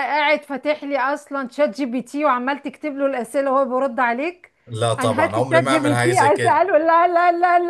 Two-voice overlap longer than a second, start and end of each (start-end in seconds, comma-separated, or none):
5.0-6.6